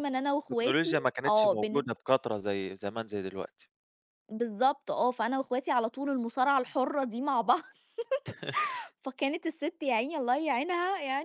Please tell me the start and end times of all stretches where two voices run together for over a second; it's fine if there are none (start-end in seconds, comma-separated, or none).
0.5-1.9